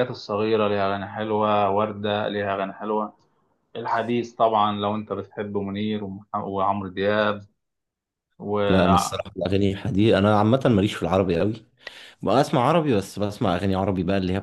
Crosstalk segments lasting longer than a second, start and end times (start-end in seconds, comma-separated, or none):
none